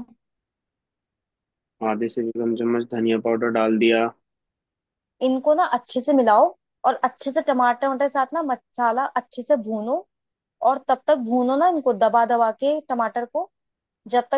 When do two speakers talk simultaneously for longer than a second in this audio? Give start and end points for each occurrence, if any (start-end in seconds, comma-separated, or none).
none